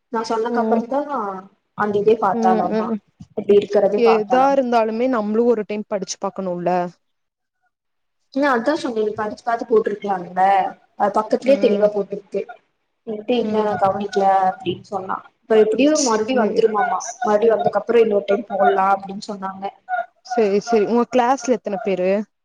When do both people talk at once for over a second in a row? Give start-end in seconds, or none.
none